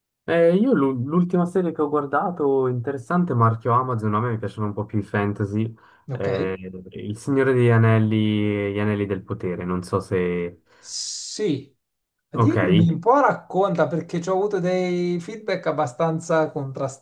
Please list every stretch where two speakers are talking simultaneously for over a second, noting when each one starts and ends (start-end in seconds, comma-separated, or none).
none